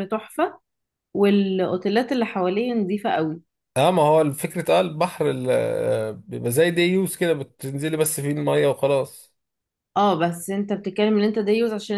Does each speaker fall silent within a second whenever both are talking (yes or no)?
yes